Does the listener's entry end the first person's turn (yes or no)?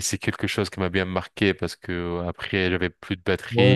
yes